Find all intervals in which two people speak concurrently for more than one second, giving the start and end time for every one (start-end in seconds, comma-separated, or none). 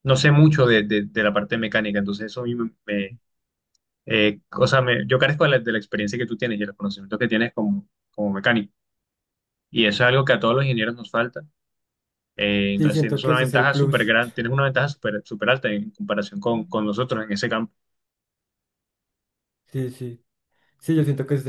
12.8-14.1